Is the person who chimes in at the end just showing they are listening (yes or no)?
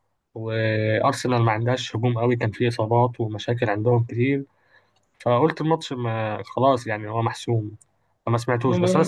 yes